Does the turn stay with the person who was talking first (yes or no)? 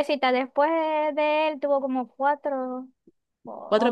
yes